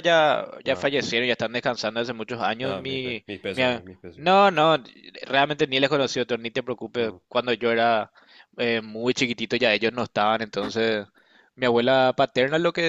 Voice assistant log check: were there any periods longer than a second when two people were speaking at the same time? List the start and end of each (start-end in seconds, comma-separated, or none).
2.6-4.3